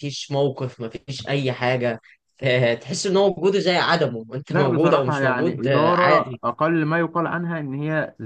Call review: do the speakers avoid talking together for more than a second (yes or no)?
no